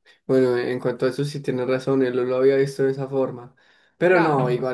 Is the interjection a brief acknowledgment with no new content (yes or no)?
yes